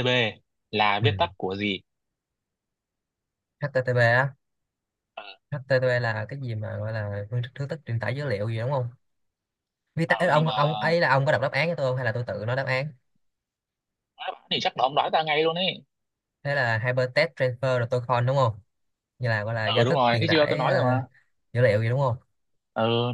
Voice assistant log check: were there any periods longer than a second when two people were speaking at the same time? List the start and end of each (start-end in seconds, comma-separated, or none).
19.6-21.0